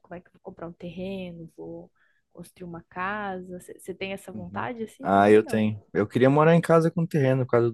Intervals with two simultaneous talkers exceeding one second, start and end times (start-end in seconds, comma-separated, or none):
4.3-5.9